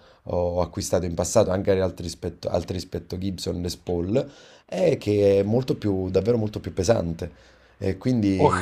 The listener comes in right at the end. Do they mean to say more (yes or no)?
yes